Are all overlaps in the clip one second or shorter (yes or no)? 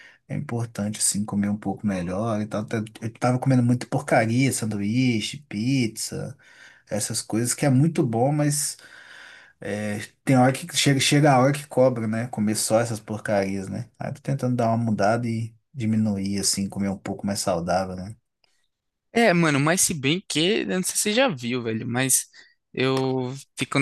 yes